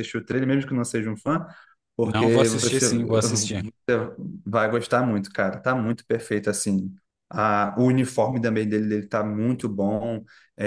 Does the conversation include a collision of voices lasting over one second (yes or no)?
yes